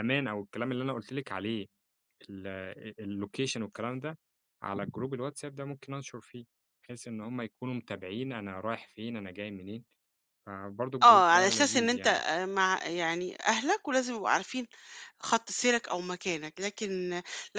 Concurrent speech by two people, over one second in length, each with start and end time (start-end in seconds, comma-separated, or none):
11.0-12.2